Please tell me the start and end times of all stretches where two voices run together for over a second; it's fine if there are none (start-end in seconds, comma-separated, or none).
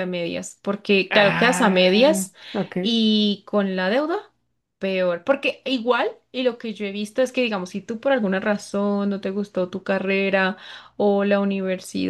1.1-2.3